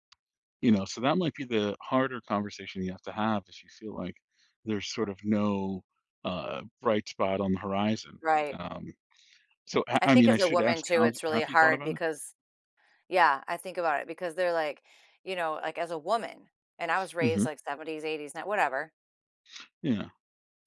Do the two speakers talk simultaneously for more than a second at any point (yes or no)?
yes